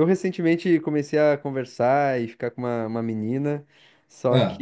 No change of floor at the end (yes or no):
yes